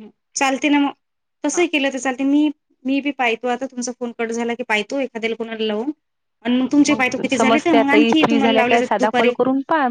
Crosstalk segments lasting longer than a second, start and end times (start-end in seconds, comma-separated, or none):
7.3-9.3